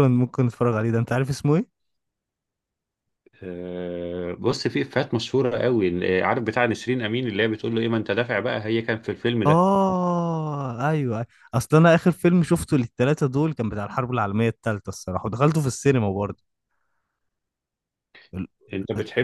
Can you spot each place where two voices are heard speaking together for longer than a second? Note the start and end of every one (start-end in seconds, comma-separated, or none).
none